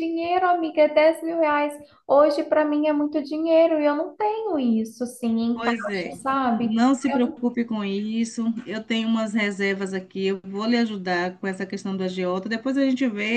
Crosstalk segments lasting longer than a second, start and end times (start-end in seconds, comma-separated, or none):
5.5-7.4